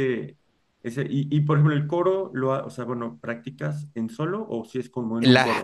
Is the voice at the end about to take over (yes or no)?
yes